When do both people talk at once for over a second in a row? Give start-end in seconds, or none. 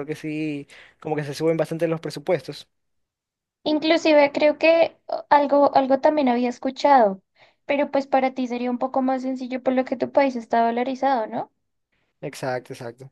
none